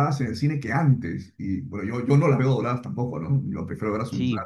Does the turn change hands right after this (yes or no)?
no